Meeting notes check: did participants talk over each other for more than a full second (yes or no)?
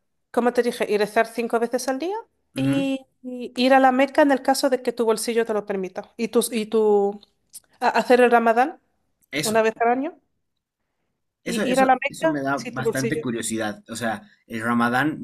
yes